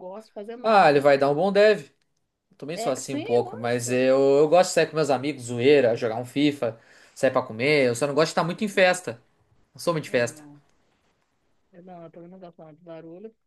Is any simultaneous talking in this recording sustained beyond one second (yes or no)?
yes